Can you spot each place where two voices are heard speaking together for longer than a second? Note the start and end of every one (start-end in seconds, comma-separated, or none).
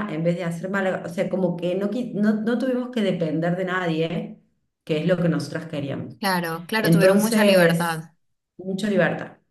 6.8-8.0